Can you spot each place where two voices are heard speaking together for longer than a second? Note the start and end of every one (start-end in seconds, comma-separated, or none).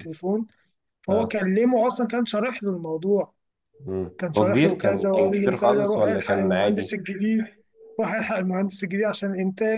4.2-6.9